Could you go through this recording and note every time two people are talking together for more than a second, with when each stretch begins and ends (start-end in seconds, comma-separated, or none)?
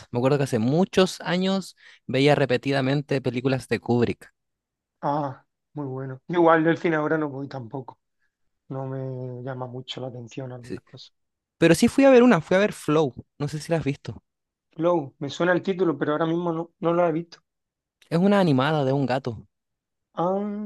none